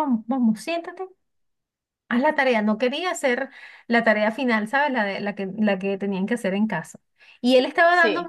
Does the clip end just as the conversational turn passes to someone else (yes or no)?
no